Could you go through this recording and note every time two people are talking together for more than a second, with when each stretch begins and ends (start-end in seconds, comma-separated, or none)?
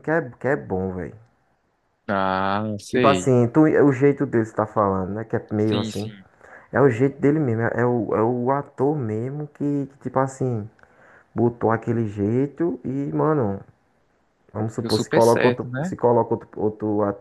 14.8-16.0